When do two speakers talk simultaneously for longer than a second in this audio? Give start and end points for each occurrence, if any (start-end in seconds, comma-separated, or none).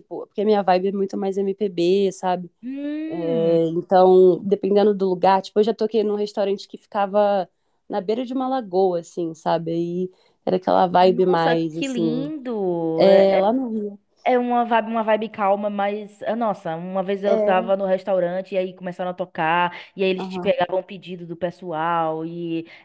11.0-12.3